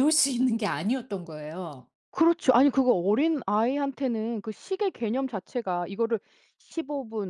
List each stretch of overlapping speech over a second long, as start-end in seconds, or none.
none